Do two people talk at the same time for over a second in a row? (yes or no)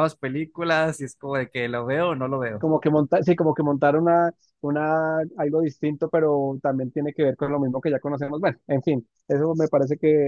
no